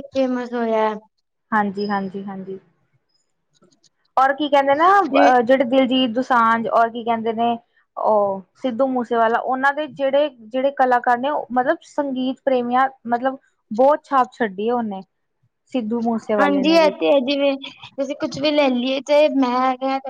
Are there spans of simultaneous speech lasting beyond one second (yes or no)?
no